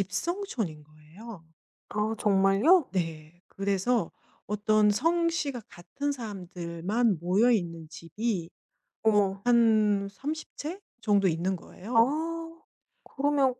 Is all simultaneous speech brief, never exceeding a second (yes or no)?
yes